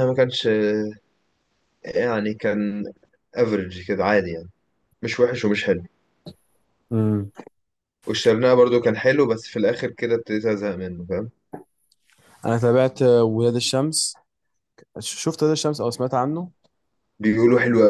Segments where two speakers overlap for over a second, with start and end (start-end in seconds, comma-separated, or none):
none